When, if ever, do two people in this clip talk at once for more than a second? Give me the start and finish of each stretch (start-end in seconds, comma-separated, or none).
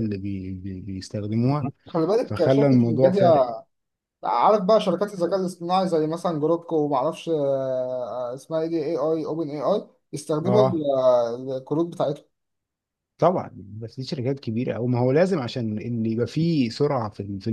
2.2-3.5